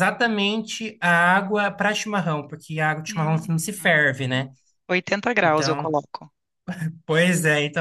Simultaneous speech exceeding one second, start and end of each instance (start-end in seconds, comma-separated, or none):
3.1-4.5